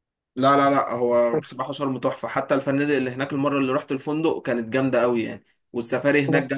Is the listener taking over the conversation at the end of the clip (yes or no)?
no